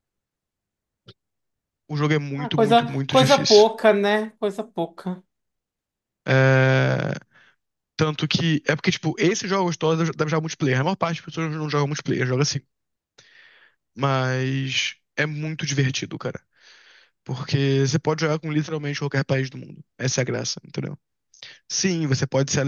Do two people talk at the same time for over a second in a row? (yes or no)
yes